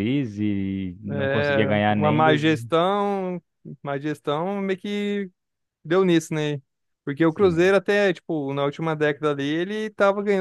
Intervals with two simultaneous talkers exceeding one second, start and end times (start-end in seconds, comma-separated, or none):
1.1-2.4